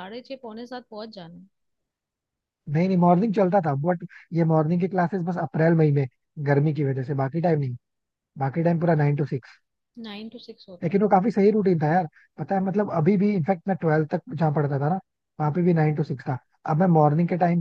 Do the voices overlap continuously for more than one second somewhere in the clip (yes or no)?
no